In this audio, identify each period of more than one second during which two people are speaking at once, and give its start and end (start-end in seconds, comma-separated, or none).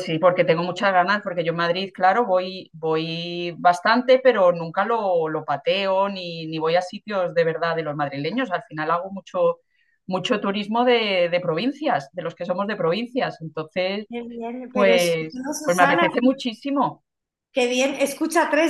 14.7-16.1